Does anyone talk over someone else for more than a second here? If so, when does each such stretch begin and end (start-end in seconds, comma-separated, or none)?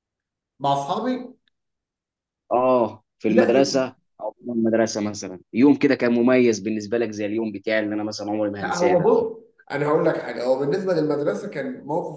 none